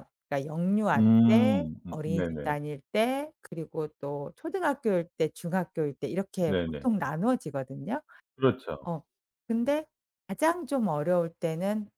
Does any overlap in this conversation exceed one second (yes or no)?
yes